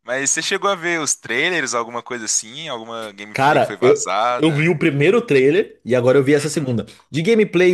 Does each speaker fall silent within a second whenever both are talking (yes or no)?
no